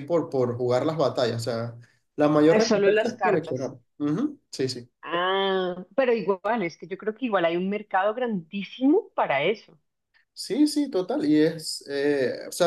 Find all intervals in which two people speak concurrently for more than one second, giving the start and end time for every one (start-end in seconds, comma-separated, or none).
2.4-3.7